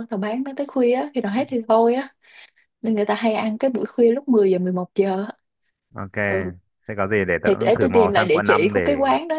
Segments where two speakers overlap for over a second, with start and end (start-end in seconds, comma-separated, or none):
7.4-8.8